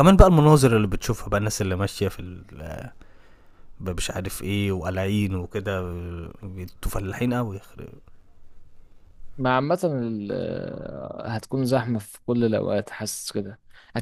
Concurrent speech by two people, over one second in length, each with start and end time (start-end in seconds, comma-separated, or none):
none